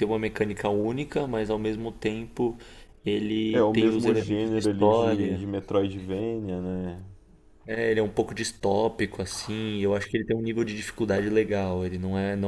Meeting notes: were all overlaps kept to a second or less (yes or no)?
no